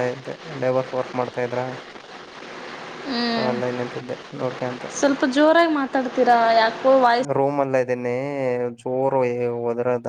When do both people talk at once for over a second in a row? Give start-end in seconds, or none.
none